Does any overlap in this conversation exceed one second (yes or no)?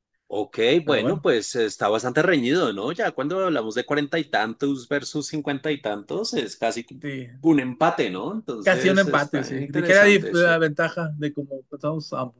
yes